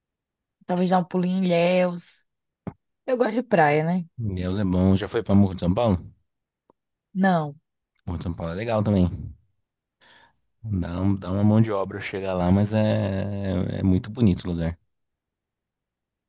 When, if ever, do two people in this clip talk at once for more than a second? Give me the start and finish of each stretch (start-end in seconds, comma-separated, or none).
none